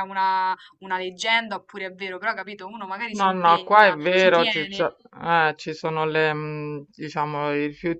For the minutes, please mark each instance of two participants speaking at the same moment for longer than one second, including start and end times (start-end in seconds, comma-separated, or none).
3.1-4.9